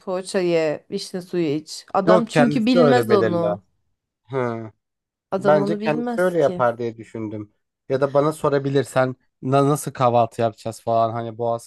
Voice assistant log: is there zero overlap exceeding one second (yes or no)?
no